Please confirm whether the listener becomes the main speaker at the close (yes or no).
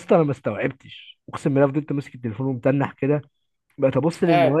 no